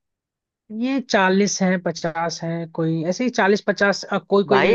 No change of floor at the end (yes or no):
no